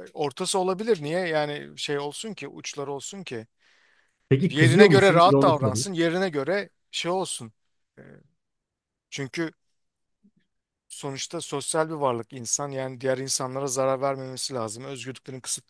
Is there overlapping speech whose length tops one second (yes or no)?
yes